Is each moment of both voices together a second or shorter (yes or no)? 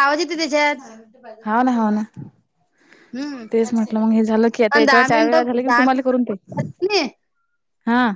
no